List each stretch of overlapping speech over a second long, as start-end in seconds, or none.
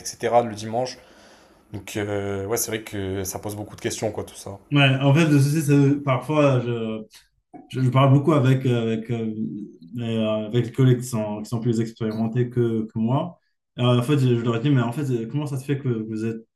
none